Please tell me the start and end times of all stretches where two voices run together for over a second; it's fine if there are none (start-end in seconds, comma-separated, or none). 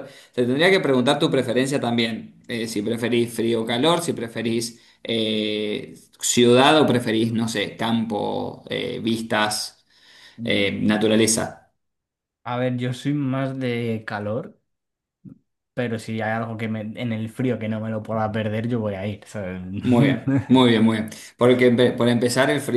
none